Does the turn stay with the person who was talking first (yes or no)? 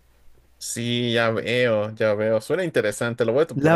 no